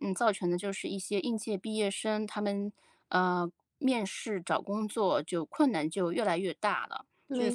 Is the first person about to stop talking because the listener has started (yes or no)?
no